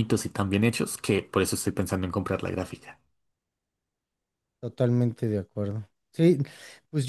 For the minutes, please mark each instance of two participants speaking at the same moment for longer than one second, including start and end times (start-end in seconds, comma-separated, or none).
none